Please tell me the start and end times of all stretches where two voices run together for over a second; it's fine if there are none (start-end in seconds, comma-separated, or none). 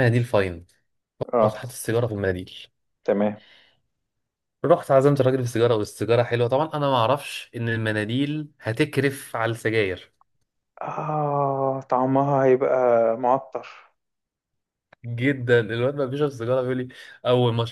none